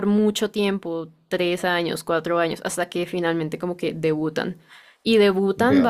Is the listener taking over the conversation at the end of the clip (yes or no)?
no